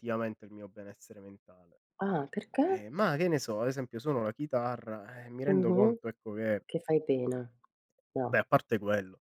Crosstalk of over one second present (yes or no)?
no